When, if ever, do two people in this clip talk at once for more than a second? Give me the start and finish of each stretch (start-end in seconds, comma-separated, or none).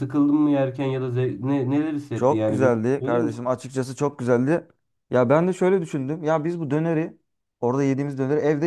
2.1-3.5